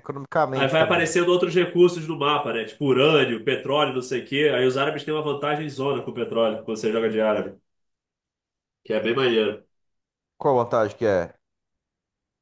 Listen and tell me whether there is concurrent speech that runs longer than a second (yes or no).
no